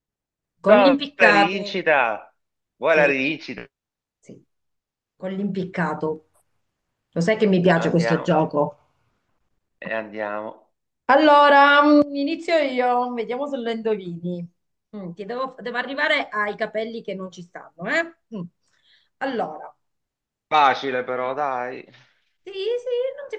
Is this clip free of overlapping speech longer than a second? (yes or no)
no